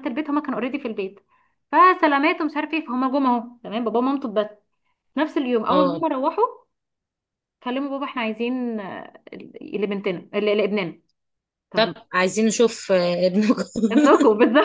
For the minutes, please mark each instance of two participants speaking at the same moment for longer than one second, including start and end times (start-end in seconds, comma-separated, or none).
none